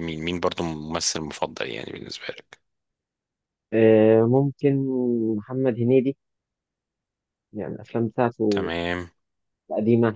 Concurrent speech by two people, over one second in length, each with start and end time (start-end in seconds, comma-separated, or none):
none